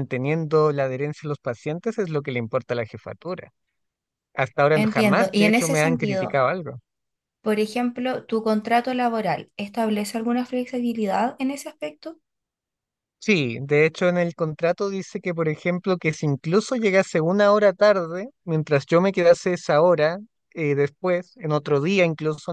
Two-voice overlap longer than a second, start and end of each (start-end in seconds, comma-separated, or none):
4.7-6.4